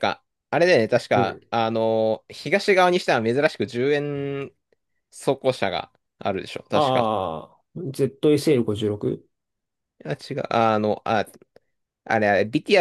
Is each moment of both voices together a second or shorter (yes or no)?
yes